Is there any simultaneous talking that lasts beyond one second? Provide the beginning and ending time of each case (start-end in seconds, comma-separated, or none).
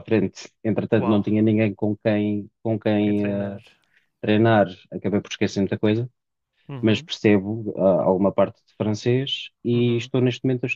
none